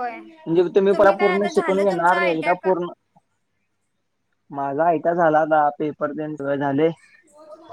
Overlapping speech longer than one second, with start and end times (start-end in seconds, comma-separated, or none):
0.9-2.7